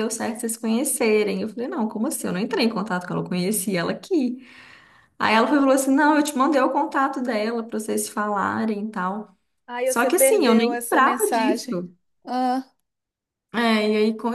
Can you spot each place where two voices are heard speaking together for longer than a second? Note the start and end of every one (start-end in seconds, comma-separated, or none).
9.8-11.8